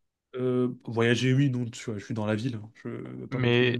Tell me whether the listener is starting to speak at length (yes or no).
yes